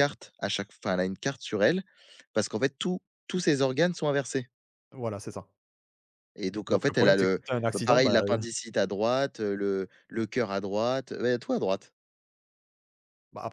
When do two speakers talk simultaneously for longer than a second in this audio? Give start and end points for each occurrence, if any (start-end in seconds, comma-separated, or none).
6.7-8.4